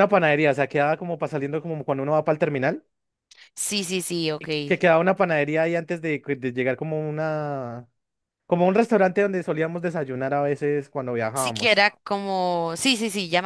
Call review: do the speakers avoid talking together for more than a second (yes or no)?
yes